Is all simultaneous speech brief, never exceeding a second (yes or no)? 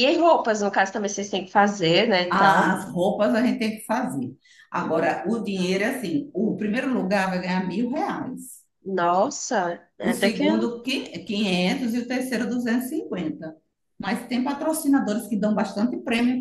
yes